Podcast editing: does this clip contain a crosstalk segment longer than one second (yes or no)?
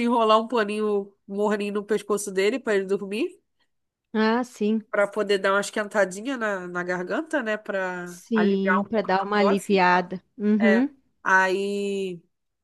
yes